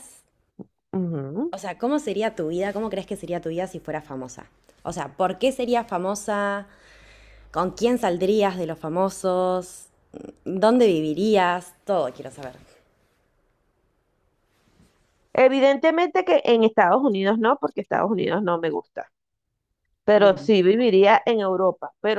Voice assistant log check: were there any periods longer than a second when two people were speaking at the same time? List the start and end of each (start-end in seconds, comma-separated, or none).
none